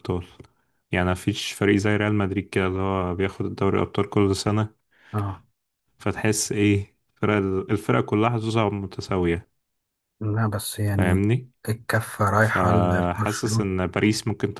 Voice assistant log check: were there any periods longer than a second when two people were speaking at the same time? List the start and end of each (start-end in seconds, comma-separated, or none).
12.4-13.7